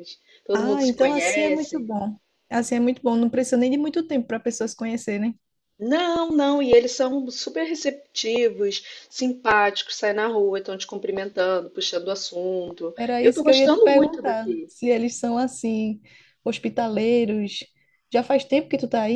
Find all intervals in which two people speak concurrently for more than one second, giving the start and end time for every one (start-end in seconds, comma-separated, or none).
0.5-1.8, 13.0-14.7